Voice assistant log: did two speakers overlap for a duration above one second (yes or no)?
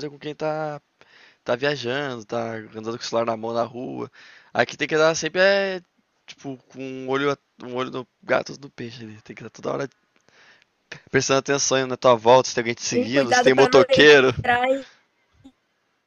yes